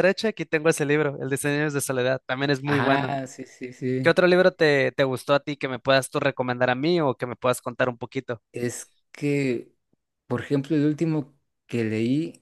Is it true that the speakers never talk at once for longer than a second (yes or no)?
yes